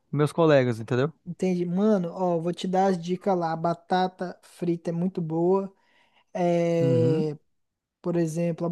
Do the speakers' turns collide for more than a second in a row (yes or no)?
no